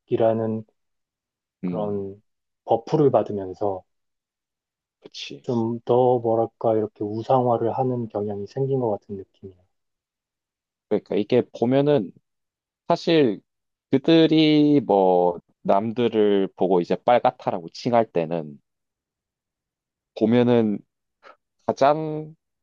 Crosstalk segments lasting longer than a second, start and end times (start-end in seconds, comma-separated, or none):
none